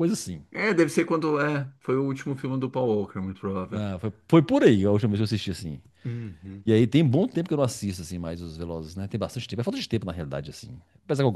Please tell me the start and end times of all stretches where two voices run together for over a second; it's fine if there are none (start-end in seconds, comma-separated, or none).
none